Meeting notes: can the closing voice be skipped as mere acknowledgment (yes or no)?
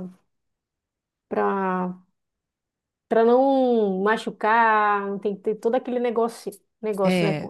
no